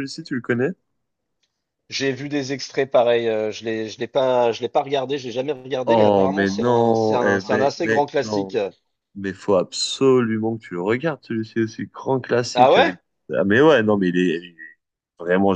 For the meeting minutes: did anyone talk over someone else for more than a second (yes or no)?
yes